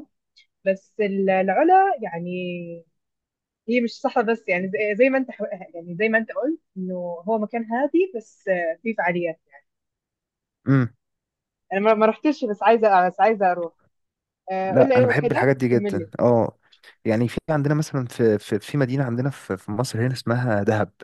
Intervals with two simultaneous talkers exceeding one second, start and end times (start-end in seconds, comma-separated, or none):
14.7-16.1